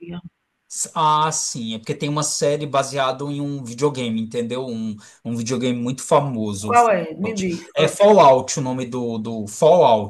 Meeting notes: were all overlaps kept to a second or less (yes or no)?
no